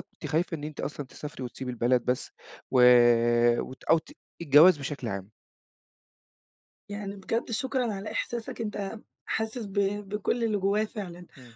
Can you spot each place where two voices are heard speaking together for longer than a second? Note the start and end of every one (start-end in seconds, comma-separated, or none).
none